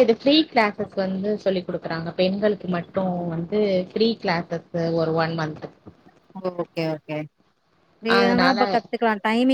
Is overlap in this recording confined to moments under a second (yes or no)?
yes